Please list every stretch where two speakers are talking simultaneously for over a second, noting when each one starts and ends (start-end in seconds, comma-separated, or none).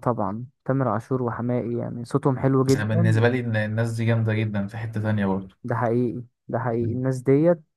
none